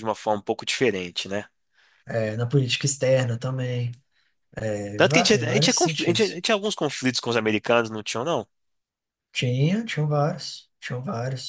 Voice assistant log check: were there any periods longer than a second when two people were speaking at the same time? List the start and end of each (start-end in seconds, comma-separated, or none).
5.0-6.4